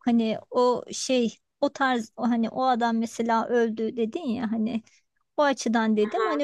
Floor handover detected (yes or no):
no